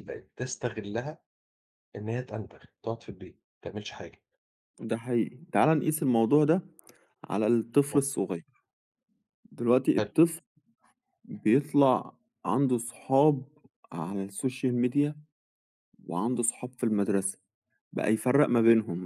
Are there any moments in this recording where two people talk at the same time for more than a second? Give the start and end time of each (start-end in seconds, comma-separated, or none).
none